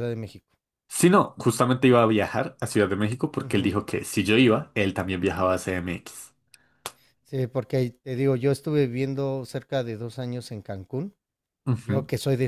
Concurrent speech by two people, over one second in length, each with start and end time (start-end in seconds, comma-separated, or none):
none